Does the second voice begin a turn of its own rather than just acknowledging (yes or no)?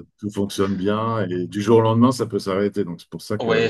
yes